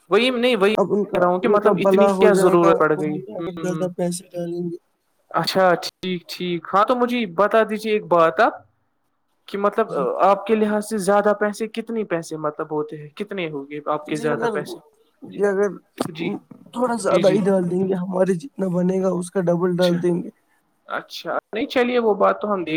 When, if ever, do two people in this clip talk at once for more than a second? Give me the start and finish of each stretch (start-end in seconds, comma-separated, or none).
0.8-3.9